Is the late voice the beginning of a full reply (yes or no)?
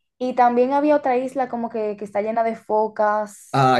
yes